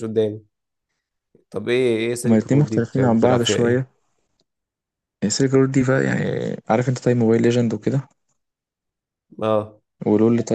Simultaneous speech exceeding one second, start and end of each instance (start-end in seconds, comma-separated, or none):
2.2-3.8